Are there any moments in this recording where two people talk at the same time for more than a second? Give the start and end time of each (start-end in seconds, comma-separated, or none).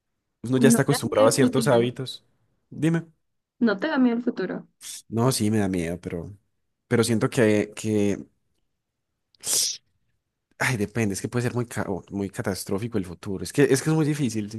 0.6-1.9